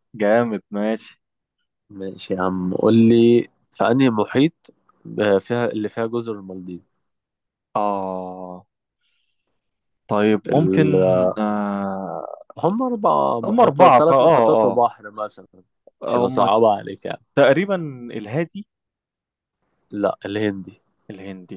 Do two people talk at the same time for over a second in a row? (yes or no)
yes